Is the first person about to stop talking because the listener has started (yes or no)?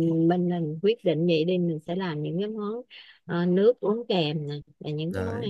no